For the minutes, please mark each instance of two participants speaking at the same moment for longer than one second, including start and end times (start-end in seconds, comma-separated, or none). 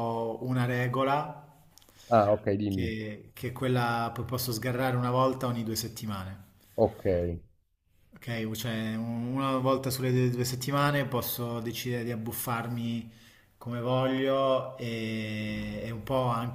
none